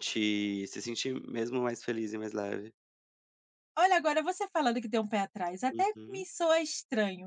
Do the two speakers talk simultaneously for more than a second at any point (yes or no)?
no